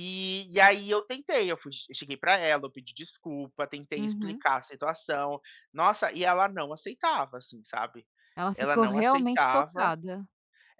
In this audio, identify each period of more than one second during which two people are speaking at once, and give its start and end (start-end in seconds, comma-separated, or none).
8.5-9.9